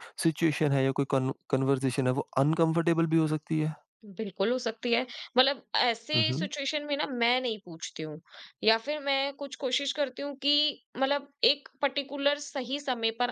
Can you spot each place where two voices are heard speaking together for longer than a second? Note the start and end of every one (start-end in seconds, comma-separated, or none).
none